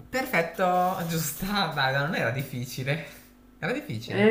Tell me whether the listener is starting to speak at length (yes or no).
yes